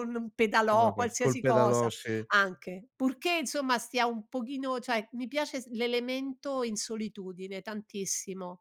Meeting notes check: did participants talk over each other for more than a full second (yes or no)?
yes